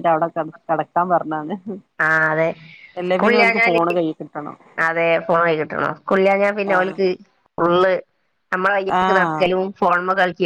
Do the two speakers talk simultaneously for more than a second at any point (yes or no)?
no